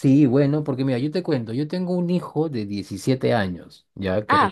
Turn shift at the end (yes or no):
no